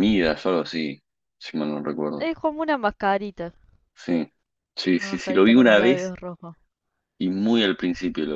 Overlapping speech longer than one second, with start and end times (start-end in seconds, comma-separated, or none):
4.9-6.1